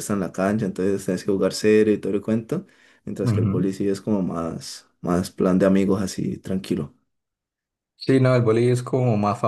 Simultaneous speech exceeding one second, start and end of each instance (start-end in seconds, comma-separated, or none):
none